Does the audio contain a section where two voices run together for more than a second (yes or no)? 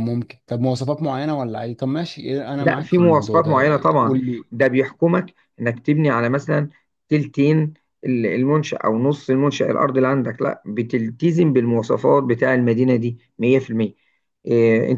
yes